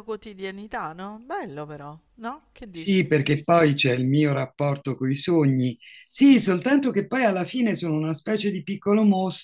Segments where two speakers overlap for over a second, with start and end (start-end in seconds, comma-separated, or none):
none